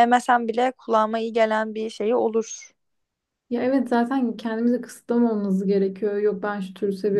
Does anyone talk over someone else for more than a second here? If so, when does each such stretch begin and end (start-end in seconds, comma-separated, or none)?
none